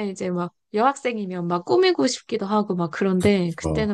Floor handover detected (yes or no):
no